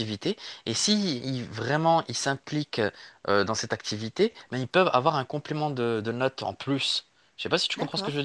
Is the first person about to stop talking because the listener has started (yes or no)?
yes